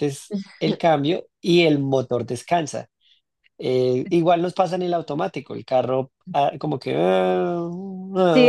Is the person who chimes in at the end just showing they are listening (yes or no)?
no